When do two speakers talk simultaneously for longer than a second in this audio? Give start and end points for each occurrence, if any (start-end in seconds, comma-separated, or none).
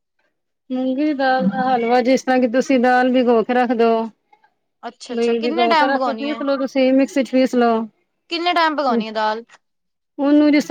5.1-6.4